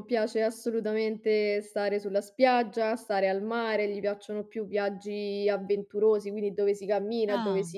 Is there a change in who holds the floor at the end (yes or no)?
no